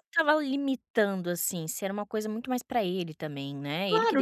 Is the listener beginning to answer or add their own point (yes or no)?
yes